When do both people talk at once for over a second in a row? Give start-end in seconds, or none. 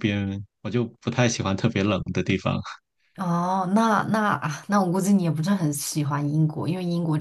none